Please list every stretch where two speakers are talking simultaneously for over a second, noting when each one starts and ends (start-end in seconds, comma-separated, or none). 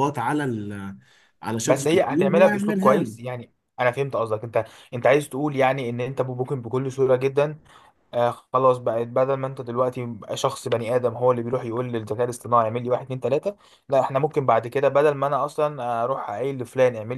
1.6-3.1